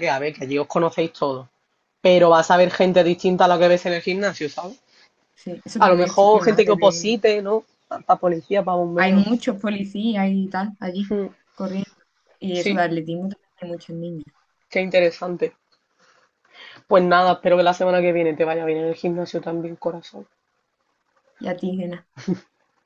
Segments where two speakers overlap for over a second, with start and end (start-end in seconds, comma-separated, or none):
5.8-7.2